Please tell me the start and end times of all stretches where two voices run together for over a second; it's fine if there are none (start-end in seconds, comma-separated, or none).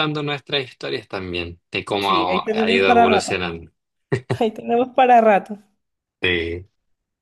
2.0-3.3